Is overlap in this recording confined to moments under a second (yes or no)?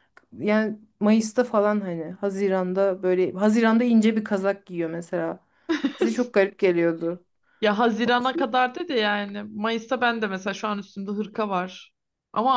yes